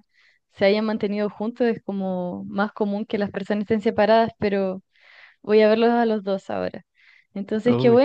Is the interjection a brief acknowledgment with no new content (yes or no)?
yes